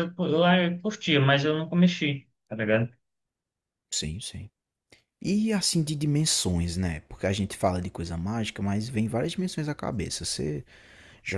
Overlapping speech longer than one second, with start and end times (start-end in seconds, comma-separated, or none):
none